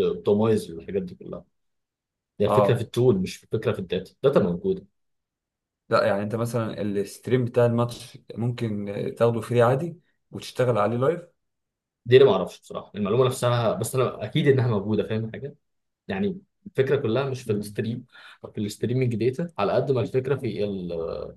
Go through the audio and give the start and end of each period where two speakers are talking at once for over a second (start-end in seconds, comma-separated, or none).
none